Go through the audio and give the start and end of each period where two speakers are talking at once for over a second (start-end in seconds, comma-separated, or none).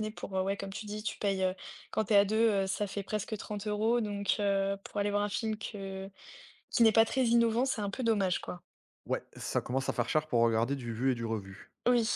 none